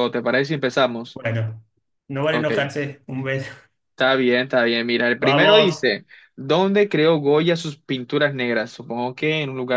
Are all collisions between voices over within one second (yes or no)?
yes